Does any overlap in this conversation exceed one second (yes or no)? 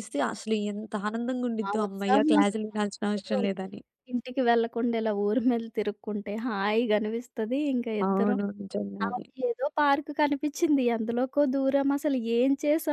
yes